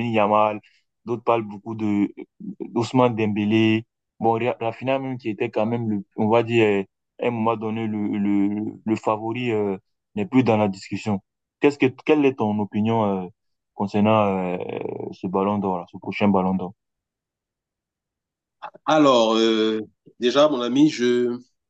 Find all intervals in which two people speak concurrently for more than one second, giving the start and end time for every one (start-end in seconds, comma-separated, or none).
none